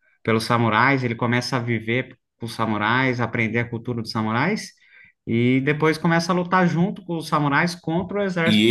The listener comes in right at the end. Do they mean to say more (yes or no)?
yes